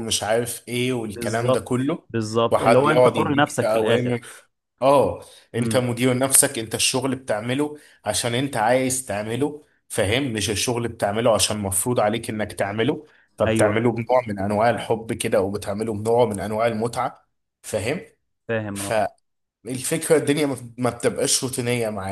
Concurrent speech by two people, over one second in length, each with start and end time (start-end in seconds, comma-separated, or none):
2.5-4.1